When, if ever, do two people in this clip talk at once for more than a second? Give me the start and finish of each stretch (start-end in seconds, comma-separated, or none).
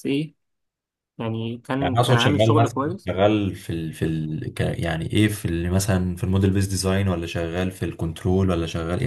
1.8-3.1